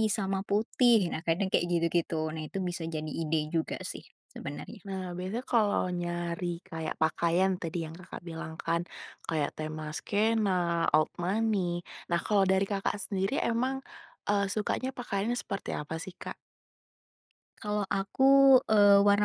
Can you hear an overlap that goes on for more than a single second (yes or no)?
no